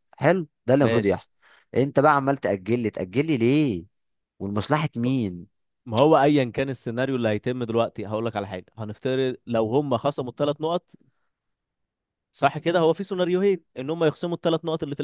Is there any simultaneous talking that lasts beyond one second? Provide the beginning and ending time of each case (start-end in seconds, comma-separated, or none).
none